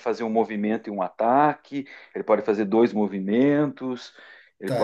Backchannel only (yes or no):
no